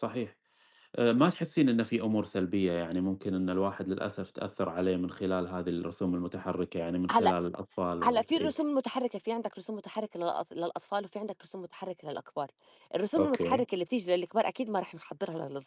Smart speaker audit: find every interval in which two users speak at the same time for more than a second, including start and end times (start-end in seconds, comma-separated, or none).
none